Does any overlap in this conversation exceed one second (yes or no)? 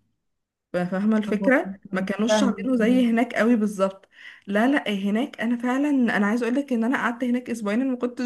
yes